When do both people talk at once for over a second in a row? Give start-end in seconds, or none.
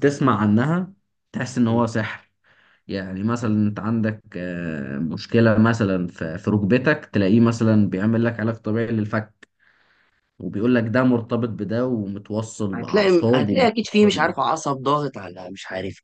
12.7-14.3